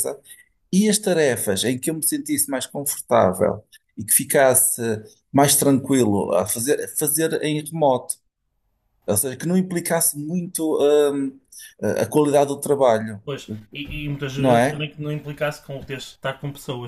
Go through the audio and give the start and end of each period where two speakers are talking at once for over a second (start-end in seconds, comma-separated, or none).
none